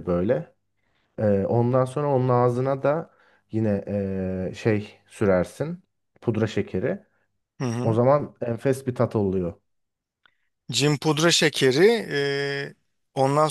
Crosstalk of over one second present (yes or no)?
no